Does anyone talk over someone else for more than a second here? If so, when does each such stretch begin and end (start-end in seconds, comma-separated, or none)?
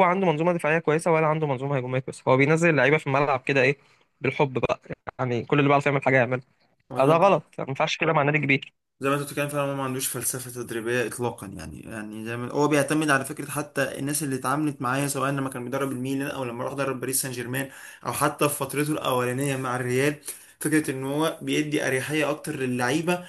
none